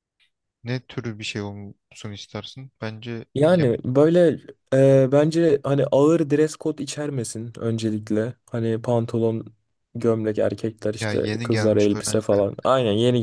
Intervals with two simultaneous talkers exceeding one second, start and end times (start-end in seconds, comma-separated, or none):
11.0-12.4